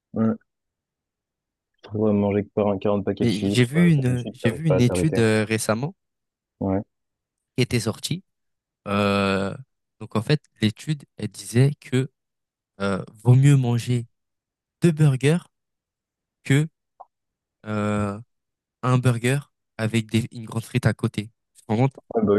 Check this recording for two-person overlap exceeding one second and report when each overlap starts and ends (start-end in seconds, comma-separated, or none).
3.2-5.2